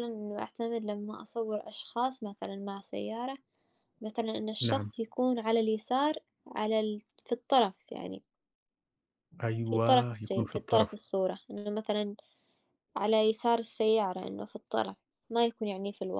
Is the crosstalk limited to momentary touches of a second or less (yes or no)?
no